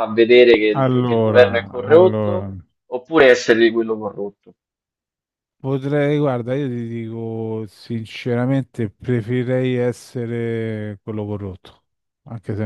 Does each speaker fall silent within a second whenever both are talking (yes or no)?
no